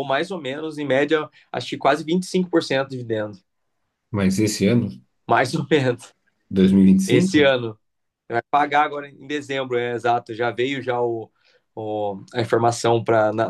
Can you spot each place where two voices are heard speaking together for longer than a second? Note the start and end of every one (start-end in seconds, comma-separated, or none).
none